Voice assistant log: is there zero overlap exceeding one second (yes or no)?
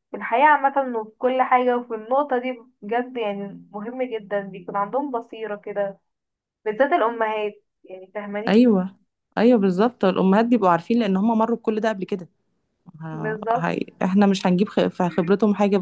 yes